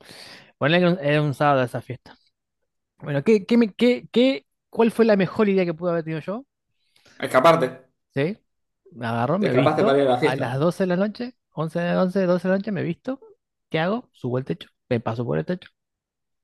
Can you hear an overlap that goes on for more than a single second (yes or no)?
yes